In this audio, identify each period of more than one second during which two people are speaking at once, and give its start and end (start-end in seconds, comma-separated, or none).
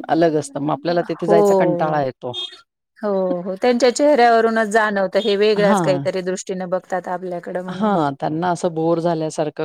none